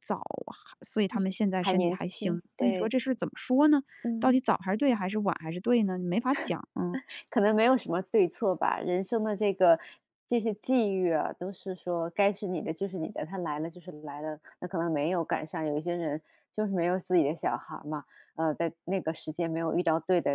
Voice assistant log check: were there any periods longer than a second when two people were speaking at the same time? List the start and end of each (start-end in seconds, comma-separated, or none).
1.6-2.9